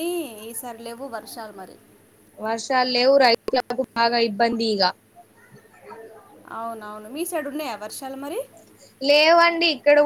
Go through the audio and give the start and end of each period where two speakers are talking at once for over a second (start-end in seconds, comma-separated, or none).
none